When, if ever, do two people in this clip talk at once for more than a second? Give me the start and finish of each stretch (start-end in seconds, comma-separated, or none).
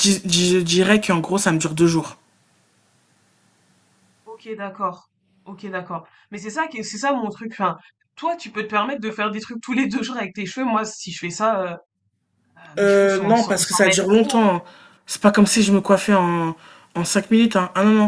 12.8-14.4